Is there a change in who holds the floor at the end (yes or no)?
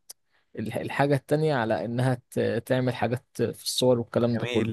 yes